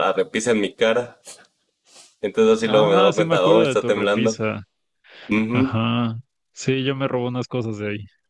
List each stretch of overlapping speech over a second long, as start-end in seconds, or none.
2.6-4.4